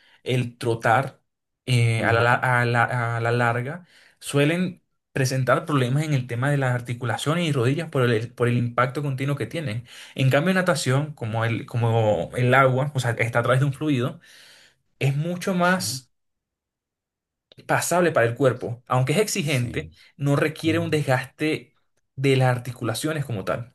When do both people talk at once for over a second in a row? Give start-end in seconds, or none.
none